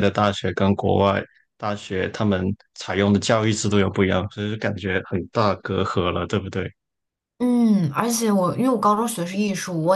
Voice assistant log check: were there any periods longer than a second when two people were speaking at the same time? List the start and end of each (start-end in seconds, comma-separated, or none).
none